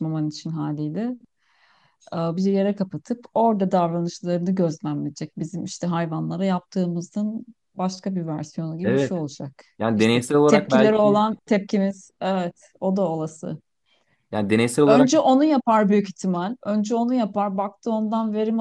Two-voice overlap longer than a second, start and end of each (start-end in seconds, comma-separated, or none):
9.8-11.2